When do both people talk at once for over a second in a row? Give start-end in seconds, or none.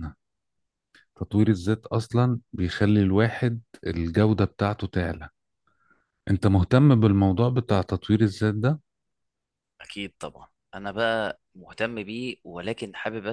none